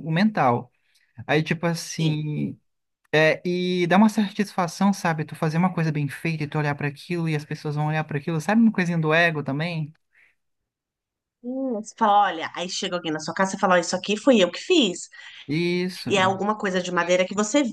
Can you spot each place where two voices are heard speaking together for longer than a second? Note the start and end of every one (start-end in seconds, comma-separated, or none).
none